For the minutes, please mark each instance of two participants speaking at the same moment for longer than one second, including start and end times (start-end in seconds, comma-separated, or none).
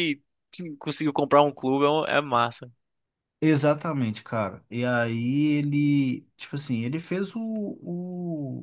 none